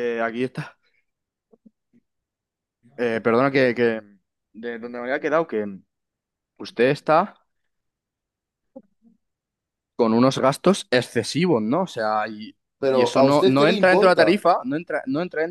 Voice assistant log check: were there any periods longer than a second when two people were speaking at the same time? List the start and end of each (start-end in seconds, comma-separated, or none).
12.8-14.4